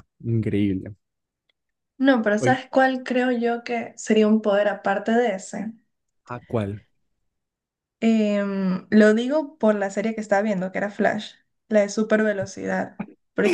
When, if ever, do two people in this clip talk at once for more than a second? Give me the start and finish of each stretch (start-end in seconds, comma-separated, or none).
none